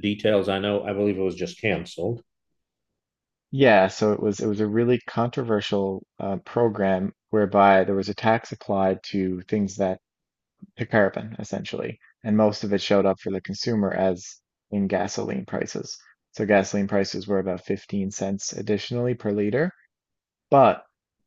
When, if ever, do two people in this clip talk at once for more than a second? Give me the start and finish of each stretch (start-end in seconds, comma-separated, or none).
none